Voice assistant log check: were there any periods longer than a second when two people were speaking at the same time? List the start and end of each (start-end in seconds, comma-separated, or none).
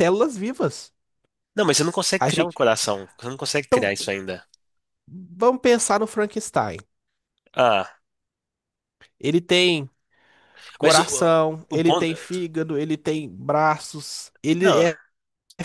10.8-12.1